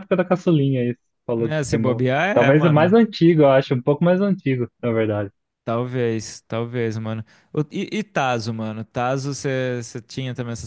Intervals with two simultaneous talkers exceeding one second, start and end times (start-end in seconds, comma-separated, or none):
1.4-3.0